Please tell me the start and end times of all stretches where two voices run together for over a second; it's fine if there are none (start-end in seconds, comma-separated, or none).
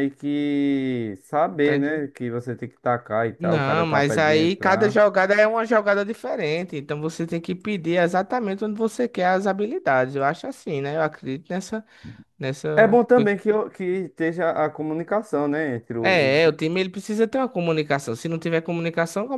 3.4-5.0